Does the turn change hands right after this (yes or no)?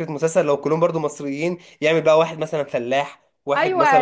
yes